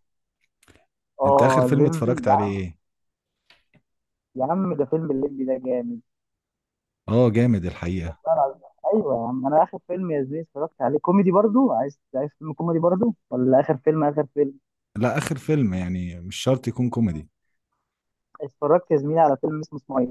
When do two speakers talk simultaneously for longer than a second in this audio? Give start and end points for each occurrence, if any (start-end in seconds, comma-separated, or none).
1.3-2.5